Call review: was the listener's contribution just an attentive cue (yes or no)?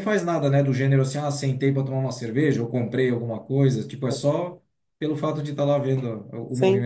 no